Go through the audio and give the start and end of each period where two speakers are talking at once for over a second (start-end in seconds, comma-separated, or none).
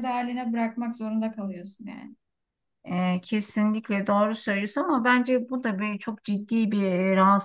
none